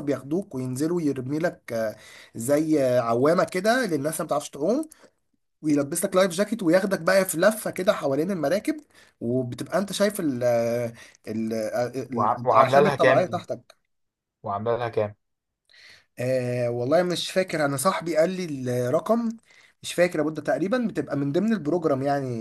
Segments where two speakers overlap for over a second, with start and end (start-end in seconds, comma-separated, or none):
12.1-13.4